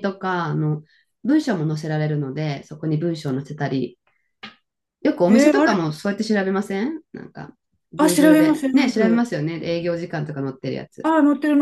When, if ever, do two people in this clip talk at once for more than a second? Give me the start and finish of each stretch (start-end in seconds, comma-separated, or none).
8.0-9.3